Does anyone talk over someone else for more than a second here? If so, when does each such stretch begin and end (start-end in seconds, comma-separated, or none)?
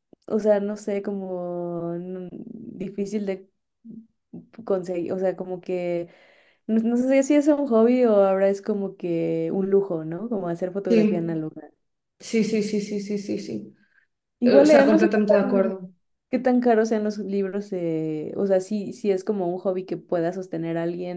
14.4-15.7